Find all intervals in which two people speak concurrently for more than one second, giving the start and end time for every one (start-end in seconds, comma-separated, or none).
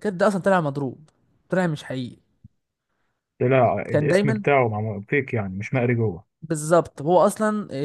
none